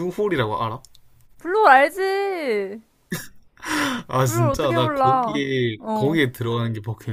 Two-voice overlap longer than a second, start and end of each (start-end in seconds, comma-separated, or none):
4.3-6.2